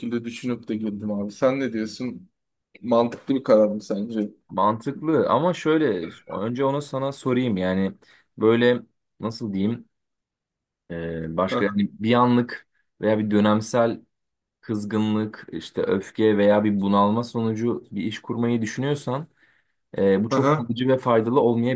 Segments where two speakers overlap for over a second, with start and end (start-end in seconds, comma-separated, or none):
none